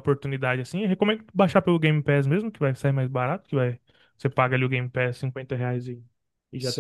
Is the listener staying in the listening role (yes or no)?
yes